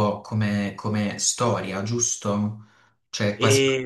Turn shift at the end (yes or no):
no